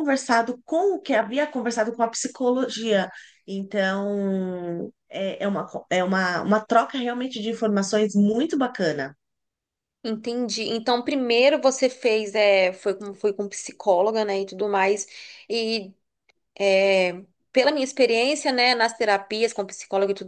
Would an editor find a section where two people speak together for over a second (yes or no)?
no